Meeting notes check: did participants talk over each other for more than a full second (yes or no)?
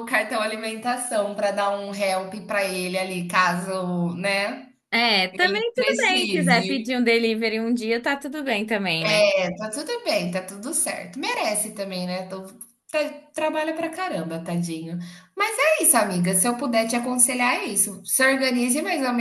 yes